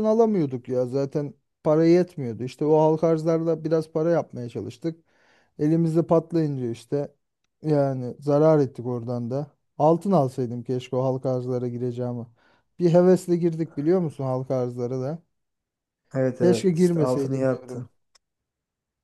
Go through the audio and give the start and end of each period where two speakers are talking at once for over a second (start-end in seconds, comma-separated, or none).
16.4-17.9